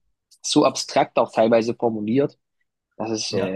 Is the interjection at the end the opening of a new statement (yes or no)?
no